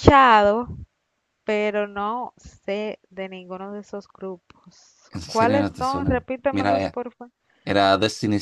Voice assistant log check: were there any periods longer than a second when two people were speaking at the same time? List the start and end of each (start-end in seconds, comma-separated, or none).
5.1-6.9